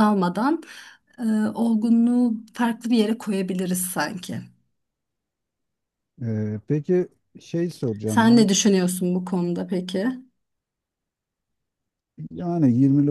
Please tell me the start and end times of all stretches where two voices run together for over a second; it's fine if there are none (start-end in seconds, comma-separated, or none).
none